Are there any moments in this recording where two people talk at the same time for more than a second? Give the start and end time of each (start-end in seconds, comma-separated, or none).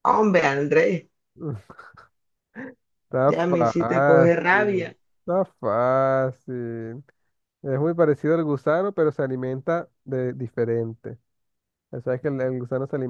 3.3-5.0